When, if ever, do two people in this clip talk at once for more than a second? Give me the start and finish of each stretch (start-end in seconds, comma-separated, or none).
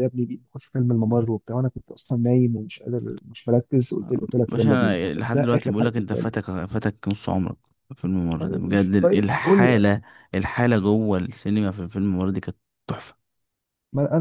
4.5-6.3, 8.4-9.9